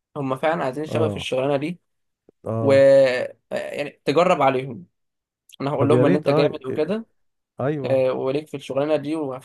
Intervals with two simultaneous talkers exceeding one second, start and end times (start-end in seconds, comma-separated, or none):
5.8-7.0